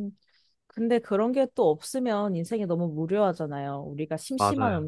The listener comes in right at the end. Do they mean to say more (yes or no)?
no